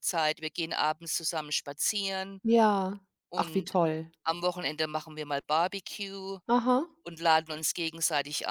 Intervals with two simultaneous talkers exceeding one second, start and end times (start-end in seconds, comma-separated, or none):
none